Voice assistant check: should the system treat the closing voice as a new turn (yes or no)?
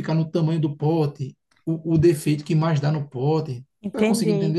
yes